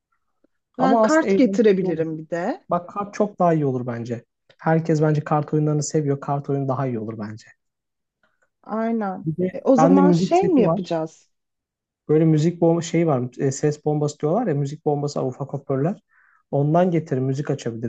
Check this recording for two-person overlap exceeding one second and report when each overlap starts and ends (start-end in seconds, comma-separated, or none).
0.8-2.0, 9.2-10.9